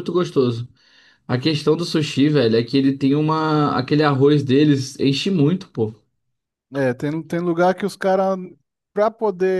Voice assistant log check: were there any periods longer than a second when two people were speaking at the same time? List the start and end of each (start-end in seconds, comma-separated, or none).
none